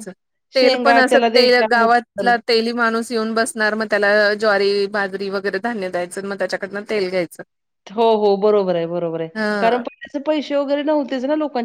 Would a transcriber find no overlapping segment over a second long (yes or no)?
no